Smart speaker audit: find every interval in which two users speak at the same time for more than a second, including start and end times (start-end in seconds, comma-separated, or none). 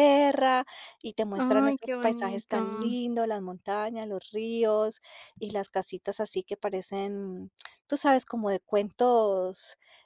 1.4-3.0